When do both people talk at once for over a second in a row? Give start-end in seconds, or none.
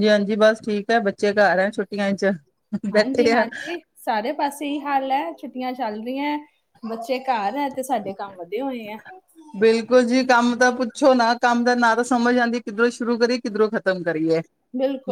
none